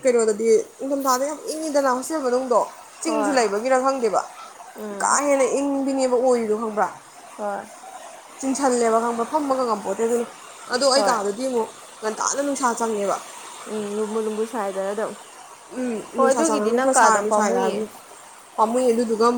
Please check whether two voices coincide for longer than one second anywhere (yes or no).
yes